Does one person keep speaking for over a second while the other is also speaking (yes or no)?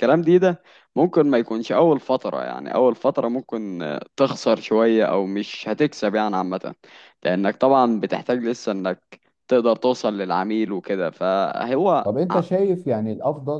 no